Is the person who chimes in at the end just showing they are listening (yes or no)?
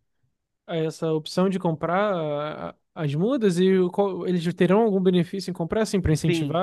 no